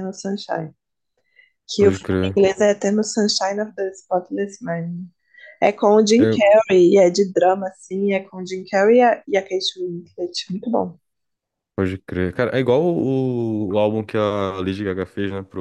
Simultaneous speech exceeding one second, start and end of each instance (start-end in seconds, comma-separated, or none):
none